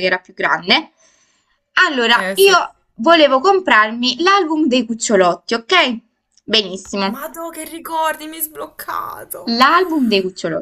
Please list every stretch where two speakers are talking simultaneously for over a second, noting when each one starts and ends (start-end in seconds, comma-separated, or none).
none